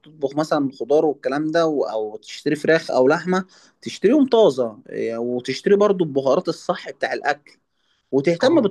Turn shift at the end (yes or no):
no